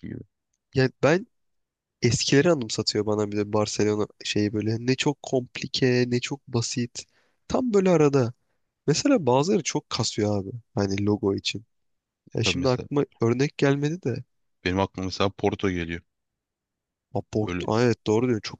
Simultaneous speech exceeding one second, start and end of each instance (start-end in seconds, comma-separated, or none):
none